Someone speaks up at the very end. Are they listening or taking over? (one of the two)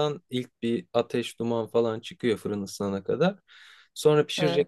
listening